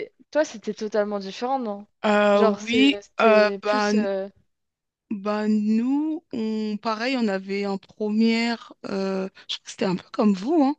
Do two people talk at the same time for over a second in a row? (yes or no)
yes